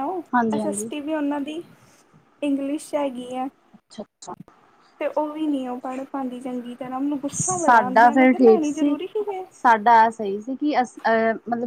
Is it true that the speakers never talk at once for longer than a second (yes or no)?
no